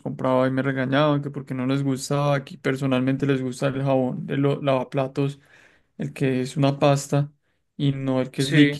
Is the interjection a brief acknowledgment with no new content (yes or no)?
yes